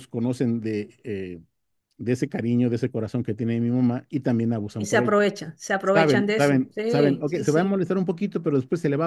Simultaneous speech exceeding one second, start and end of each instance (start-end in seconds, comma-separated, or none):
5.8-7.8